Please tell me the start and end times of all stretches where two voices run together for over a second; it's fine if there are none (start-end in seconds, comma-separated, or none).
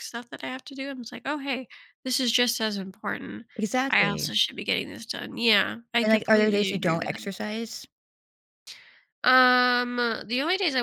6.0-7.3